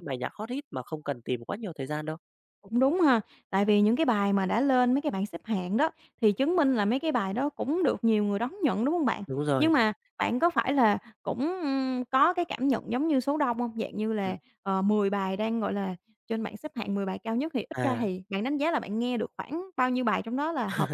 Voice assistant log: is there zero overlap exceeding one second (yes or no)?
yes